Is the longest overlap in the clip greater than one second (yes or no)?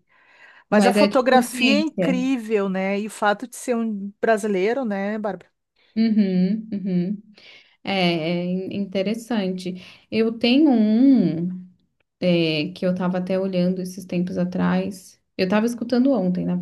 yes